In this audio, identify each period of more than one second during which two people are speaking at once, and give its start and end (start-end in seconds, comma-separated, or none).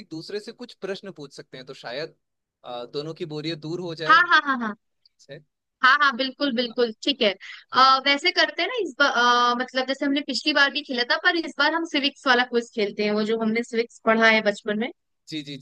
none